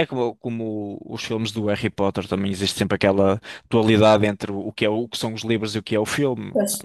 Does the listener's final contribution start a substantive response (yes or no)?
yes